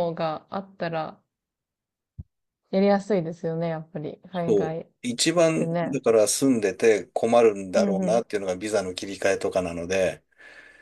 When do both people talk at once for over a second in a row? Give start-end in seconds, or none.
none